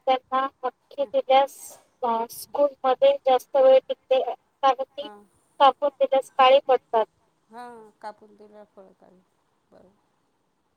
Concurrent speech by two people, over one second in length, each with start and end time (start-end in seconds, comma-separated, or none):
none